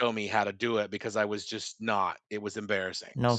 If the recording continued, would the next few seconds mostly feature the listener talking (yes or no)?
yes